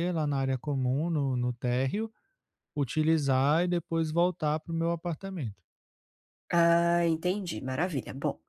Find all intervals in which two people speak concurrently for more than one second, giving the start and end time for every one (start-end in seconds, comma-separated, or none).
none